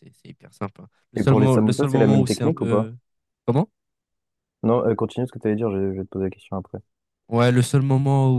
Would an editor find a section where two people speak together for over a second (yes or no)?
yes